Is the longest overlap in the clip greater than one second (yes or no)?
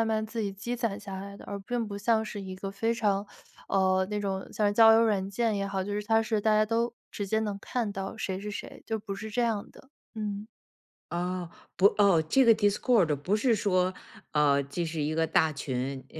no